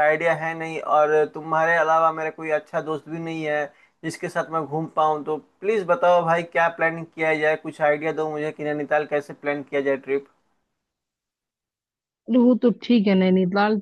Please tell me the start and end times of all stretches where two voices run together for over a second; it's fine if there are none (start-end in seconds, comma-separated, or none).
none